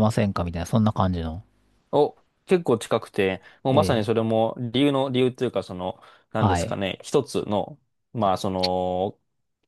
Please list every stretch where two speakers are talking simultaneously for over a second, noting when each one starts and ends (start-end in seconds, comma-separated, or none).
none